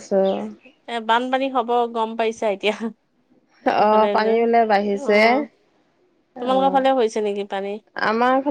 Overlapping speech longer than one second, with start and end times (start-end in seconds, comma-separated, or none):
none